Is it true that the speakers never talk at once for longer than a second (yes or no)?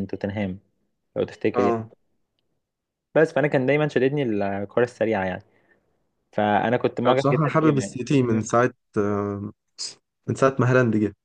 no